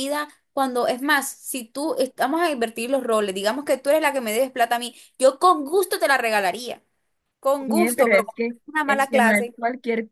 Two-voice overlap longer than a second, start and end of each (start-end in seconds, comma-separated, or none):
7.7-9.6